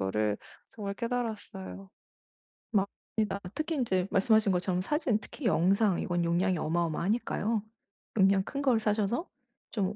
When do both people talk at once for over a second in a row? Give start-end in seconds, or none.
none